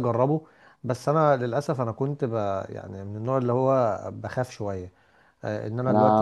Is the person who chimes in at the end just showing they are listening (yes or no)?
no